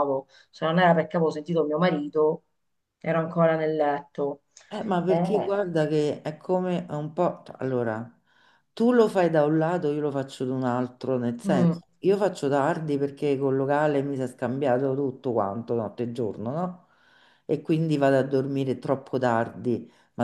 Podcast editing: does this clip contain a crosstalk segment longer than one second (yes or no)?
no